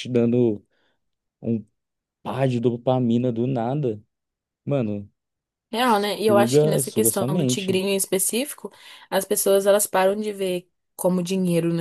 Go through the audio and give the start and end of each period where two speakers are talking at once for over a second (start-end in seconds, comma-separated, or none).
6.3-7.8